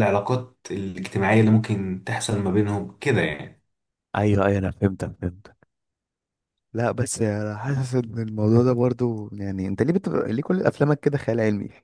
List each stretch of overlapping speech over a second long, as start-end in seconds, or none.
none